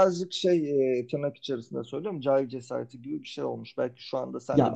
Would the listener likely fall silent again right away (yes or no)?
no